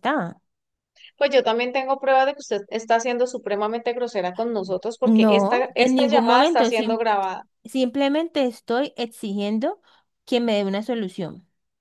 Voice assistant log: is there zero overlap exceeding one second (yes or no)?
no